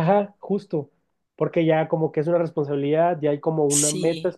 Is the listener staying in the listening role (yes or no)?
yes